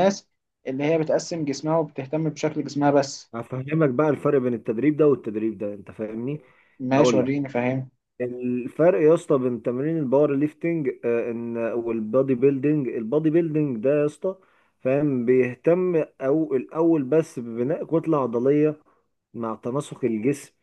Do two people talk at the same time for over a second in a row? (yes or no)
no